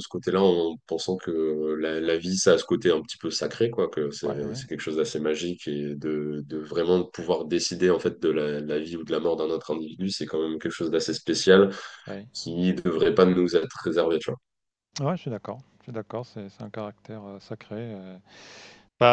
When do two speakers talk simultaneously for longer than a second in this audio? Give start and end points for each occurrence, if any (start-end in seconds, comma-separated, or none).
none